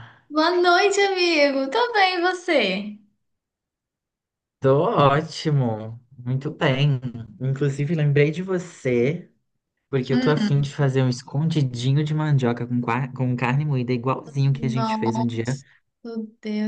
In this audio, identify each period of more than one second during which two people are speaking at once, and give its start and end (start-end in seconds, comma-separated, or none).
none